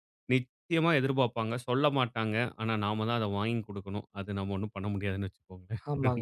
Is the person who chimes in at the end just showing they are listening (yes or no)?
no